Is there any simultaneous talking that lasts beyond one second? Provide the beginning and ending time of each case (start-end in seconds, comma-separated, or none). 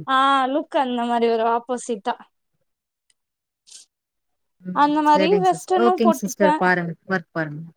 4.8-6.5